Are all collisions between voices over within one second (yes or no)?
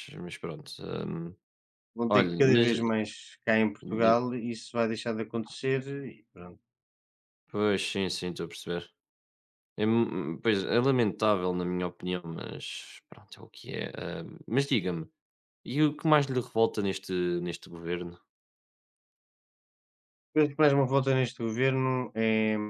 yes